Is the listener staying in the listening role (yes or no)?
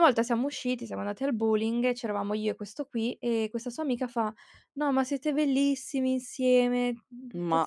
yes